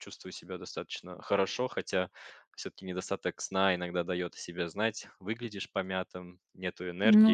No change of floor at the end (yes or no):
yes